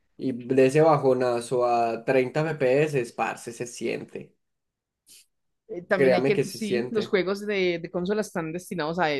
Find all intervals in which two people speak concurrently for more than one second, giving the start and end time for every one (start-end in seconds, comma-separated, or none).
5.9-7.2